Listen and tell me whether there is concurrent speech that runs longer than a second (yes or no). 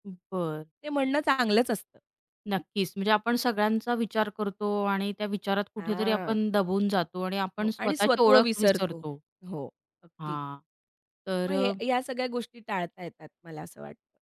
yes